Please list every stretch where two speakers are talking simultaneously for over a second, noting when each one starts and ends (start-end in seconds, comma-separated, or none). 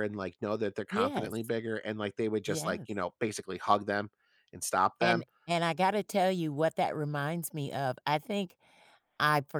none